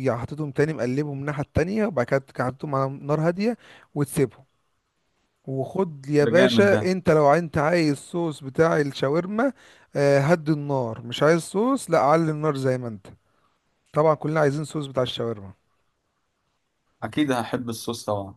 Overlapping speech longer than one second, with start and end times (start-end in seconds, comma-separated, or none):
none